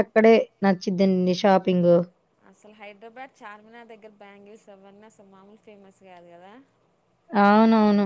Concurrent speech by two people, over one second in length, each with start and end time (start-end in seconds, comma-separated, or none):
none